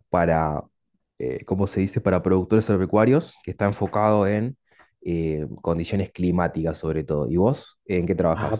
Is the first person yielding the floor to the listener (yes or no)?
yes